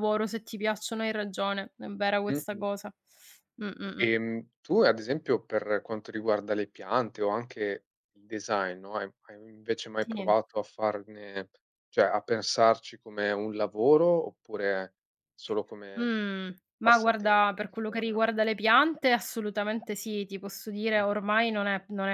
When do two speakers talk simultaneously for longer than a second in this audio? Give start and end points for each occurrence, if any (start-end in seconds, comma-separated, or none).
16.8-18.4